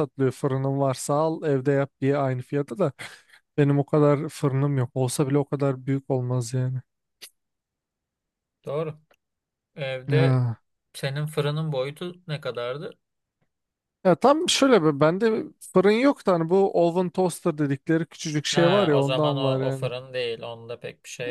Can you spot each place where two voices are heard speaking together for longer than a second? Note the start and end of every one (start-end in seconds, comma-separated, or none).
18.5-19.9